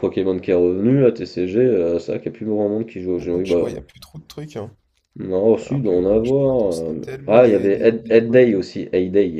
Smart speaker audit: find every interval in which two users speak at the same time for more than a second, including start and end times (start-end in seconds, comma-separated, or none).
5.6-8.6